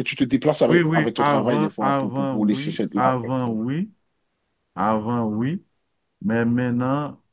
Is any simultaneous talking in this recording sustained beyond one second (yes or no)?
yes